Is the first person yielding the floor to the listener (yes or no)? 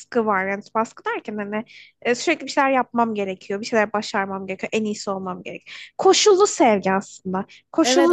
yes